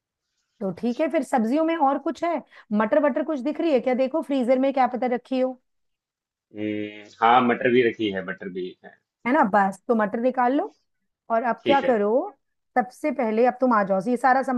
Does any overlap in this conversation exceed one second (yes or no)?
no